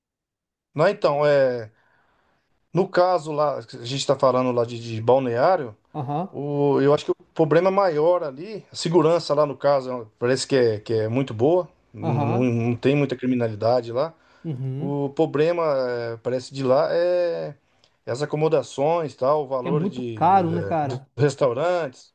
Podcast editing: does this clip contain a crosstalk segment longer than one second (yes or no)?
yes